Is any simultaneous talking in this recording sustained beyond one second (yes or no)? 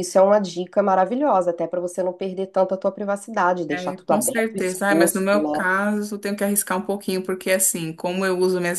yes